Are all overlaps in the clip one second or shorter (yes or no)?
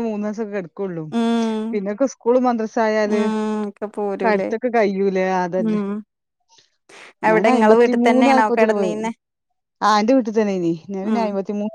no